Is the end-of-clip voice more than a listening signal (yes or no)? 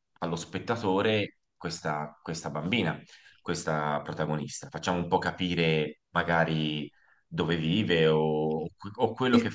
no